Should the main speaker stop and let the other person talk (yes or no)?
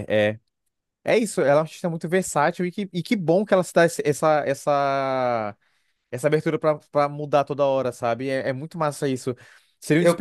no